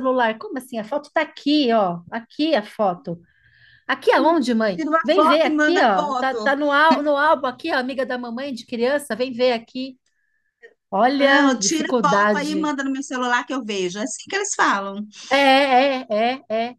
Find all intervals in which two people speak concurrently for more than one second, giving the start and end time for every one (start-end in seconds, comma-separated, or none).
4.7-6.5, 11.2-12.8